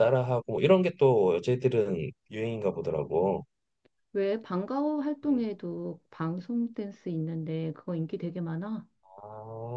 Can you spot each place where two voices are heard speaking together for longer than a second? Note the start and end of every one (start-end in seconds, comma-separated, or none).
none